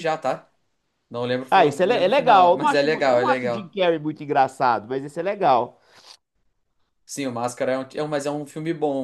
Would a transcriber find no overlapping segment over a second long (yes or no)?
no